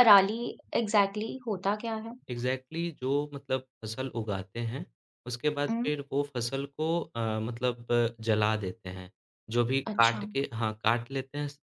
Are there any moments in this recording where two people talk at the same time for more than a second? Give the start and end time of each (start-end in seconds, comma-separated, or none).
none